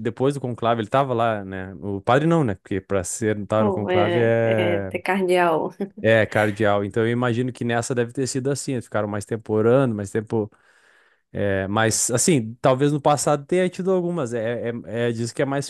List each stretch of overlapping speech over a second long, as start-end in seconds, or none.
3.6-4.9